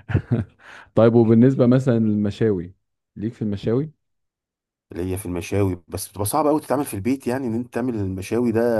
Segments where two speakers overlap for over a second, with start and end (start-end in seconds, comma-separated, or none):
none